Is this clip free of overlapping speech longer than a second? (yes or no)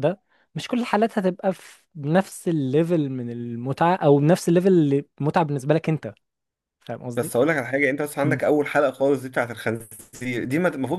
yes